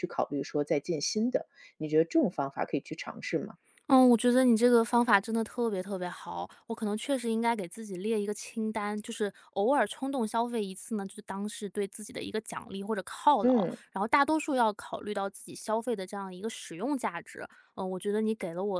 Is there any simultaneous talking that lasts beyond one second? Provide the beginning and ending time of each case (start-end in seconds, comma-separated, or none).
none